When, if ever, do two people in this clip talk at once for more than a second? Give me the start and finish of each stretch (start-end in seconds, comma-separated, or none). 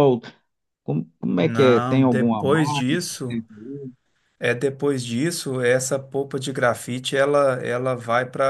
1.4-3.4